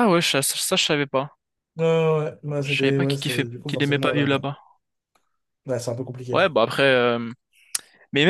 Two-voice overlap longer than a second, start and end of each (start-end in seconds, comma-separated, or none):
2.6-4.5